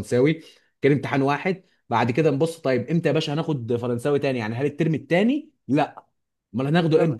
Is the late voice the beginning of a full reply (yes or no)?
no